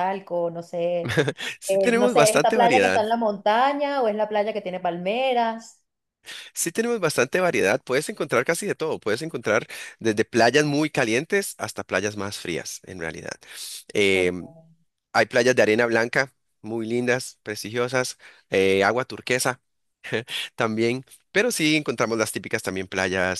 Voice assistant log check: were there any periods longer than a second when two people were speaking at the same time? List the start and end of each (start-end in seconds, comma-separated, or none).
1.7-3.0